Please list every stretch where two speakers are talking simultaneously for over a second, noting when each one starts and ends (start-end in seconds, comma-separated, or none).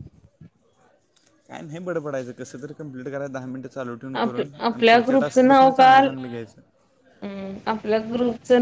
4.2-6.1